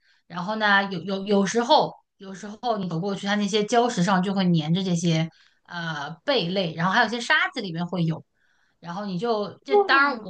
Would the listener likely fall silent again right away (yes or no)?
yes